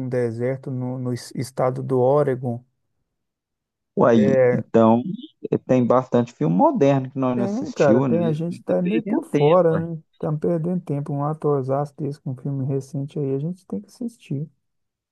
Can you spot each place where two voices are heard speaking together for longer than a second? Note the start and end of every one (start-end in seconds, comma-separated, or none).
7.3-9.7